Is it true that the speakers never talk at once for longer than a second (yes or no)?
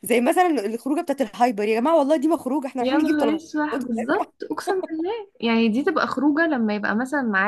no